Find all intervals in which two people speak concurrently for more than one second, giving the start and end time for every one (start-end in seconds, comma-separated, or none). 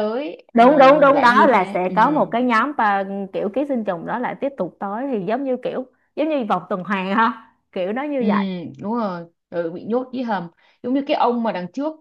0.5-1.9